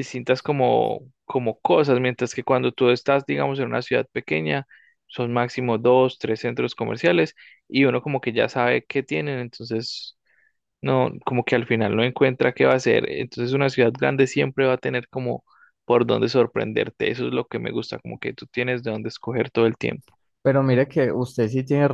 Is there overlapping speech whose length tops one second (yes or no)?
no